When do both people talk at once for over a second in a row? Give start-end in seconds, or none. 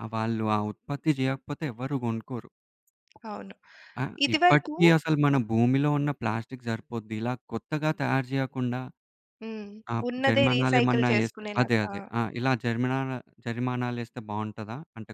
10.1-11.9